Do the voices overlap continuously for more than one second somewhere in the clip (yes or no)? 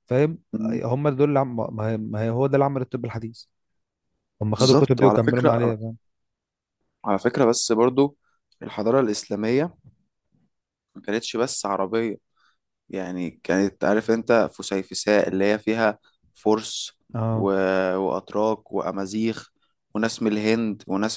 yes